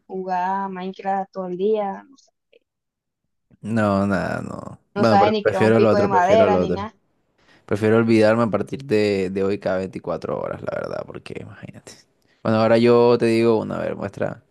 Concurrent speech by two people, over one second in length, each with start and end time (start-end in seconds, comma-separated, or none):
4.9-6.9